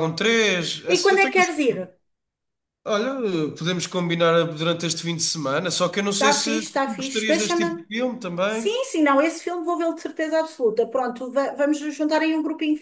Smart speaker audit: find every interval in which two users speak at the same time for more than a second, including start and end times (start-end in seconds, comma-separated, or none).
6.2-7.8